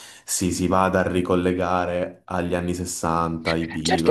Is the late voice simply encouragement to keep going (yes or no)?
no